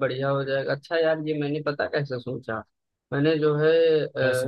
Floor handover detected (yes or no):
no